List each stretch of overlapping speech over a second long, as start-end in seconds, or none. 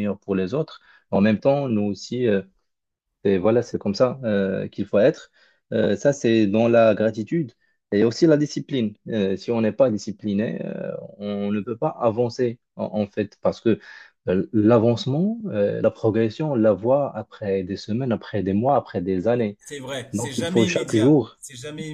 20.1-21.4